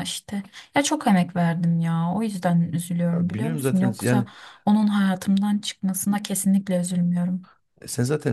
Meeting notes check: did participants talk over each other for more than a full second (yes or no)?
yes